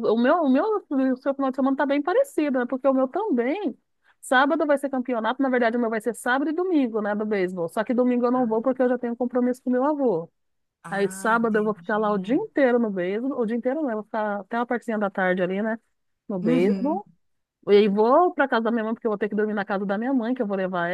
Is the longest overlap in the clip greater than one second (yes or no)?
yes